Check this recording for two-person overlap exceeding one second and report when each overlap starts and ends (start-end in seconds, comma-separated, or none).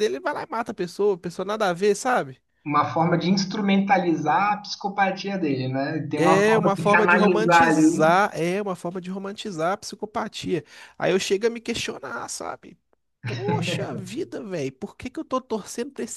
6.2-8.2